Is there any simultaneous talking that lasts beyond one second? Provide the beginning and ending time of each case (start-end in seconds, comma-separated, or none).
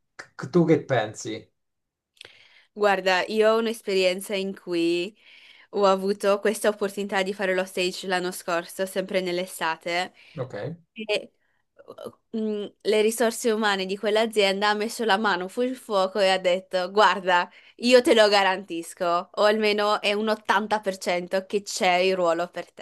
none